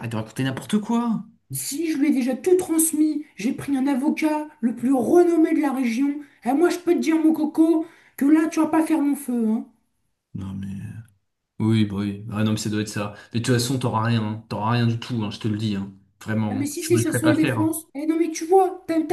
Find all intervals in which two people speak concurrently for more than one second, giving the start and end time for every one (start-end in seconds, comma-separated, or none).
16.5-17.8